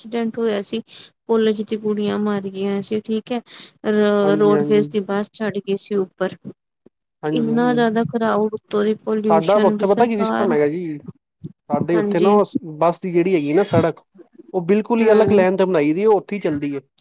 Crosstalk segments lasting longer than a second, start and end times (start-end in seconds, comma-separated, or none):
9.3-10.6